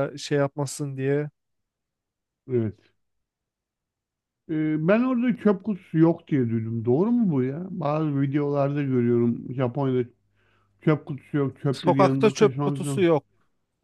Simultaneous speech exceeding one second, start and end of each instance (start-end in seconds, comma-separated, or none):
11.7-13.1